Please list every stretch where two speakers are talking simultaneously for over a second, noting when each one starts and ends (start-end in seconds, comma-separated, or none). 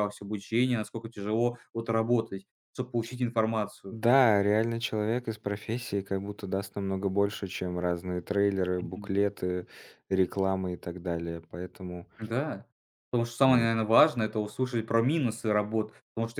none